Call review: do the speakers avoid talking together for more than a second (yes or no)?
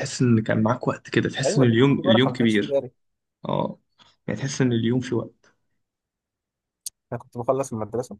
no